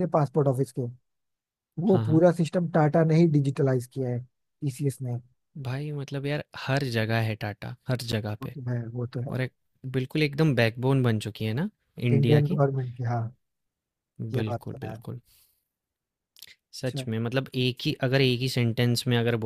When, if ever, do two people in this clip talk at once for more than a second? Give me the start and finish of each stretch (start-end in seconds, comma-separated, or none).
none